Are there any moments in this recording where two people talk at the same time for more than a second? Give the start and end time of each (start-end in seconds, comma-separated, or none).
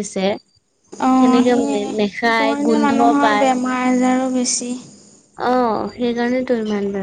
1.5-3.5